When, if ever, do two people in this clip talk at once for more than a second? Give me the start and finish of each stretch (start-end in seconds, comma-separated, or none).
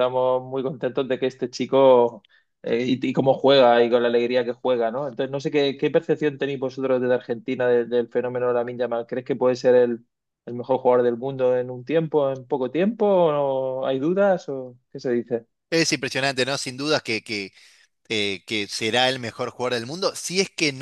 none